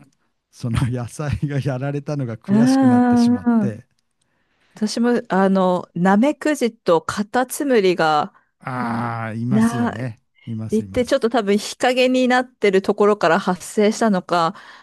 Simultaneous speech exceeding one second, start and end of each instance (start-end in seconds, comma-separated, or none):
2.5-3.8